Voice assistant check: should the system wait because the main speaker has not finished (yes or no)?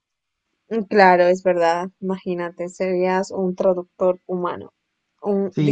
no